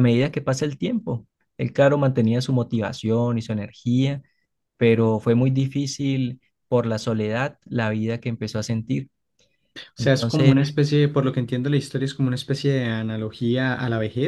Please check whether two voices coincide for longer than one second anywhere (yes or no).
no